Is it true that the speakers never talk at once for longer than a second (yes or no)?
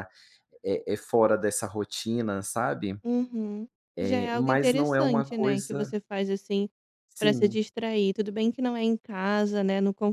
no